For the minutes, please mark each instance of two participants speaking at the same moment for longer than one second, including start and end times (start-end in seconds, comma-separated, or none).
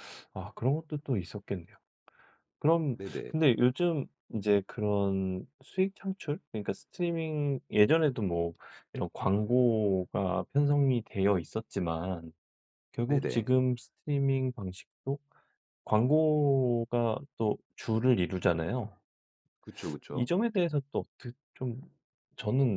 none